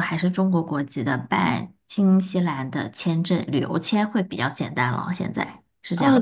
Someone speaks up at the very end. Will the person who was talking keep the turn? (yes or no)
no